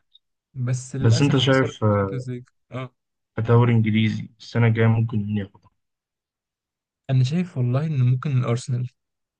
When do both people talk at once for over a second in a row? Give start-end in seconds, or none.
1.0-2.2